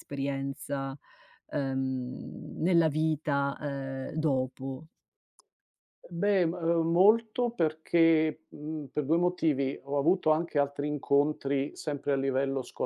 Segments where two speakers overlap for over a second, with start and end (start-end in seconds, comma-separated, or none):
none